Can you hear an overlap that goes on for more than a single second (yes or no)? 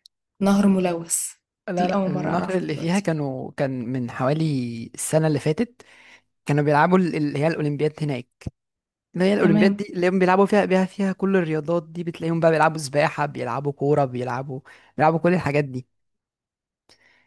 yes